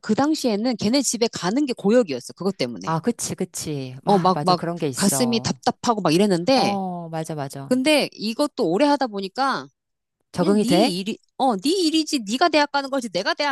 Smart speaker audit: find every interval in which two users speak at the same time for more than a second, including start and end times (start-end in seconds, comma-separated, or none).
4.0-5.6